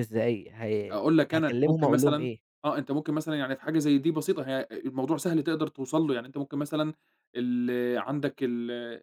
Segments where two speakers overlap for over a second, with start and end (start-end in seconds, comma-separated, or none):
0.9-2.3